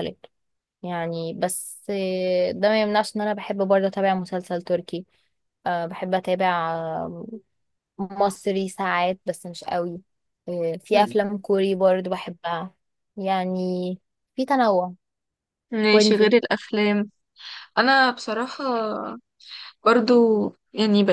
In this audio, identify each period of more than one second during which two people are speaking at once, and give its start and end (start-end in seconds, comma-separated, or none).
none